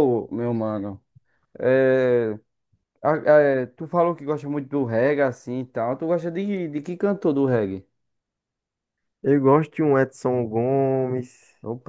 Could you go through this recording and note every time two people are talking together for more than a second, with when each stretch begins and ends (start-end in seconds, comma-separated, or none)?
none